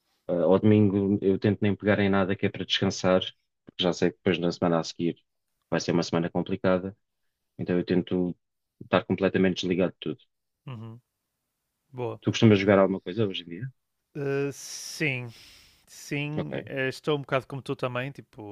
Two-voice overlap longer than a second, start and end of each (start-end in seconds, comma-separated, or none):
none